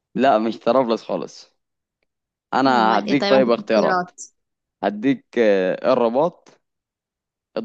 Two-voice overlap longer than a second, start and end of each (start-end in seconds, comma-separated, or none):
2.7-4.1